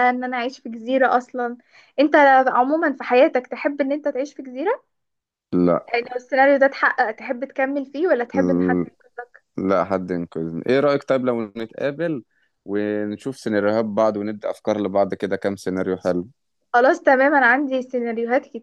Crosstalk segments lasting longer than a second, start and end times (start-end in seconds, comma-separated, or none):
none